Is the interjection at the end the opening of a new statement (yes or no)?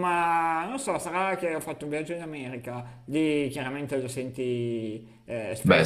no